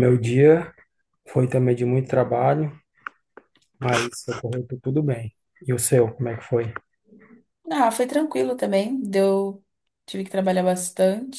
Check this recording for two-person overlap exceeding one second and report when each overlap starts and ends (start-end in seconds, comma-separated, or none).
none